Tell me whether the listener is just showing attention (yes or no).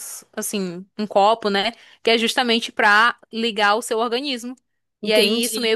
yes